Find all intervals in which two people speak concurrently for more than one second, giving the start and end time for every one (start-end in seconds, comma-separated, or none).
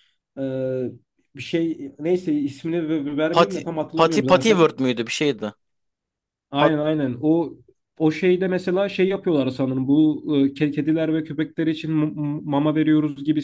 3.3-4.7